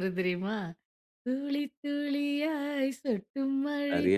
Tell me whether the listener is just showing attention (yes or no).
yes